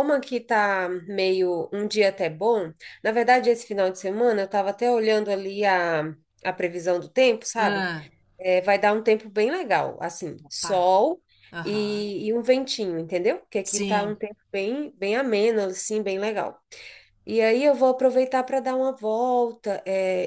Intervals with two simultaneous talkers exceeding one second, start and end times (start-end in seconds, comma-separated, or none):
none